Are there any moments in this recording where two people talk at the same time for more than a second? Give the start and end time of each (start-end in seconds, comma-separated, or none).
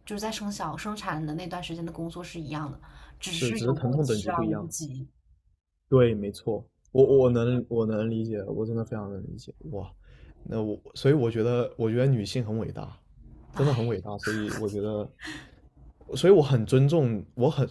3.3-4.7